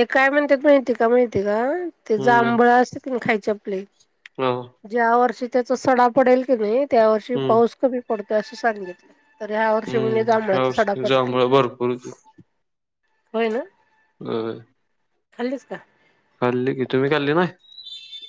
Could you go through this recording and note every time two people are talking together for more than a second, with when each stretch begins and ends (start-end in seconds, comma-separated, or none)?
9.9-11.3